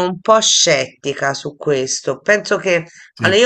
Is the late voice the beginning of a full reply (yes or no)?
no